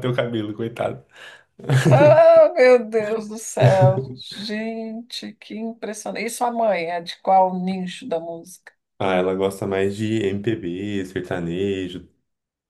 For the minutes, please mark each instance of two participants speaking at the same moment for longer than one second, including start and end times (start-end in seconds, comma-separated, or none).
none